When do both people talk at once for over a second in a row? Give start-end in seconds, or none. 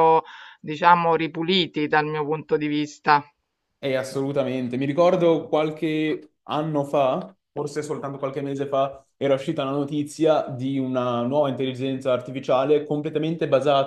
none